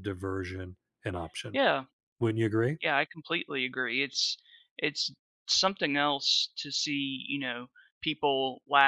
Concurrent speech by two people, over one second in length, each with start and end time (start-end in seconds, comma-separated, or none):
none